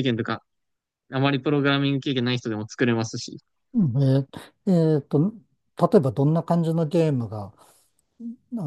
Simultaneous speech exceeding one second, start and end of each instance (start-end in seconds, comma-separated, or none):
none